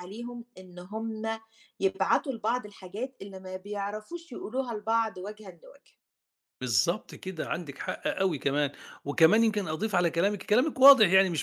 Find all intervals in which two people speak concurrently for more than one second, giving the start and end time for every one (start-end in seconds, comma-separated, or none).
none